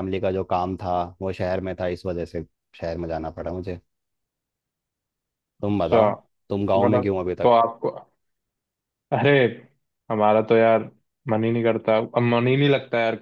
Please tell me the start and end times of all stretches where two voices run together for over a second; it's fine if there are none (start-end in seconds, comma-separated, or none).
5.7-7.5